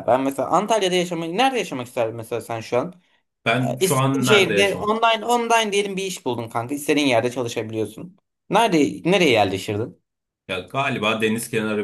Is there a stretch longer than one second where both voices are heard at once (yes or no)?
yes